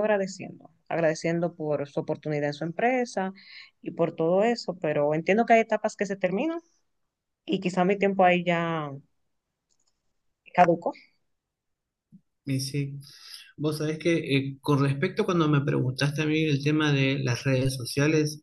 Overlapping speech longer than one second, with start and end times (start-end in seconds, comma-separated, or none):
none